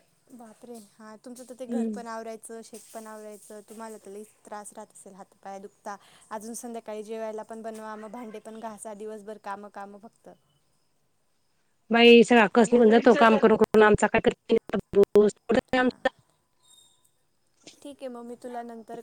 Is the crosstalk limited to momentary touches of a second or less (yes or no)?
yes